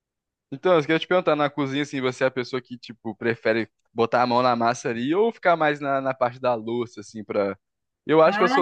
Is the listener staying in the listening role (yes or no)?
yes